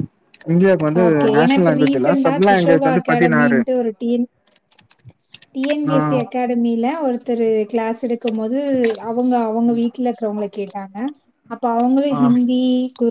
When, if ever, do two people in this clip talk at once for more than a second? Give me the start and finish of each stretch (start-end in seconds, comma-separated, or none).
1.1-3.6